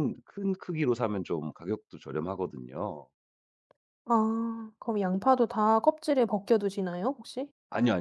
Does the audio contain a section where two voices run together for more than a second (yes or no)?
no